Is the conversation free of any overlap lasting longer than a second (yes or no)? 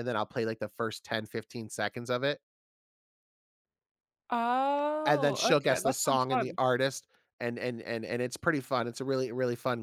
no